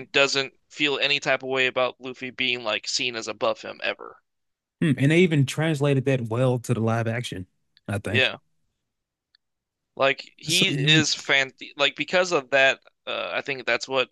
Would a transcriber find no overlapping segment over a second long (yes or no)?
yes